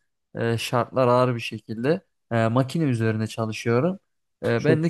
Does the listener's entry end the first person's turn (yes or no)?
no